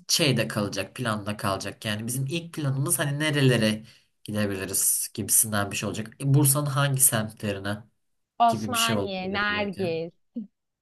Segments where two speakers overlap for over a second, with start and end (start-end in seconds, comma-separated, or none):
8.5-9.8